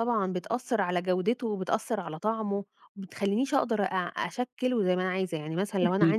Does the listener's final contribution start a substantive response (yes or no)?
yes